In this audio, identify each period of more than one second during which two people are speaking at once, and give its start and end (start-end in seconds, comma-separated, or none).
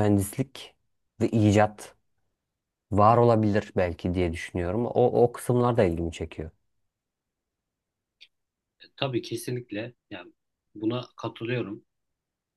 none